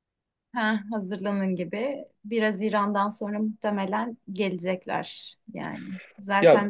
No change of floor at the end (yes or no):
yes